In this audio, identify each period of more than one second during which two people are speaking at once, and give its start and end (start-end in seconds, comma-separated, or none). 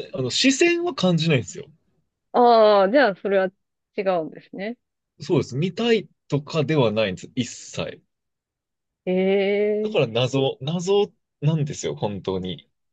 none